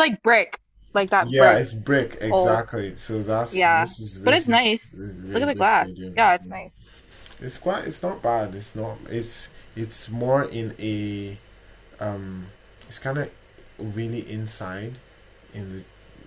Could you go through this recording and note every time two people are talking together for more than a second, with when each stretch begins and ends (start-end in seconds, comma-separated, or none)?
3.5-6.5